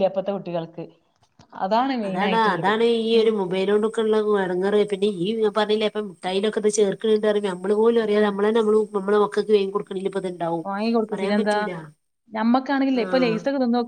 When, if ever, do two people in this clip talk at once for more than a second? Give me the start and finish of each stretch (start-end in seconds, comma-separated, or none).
none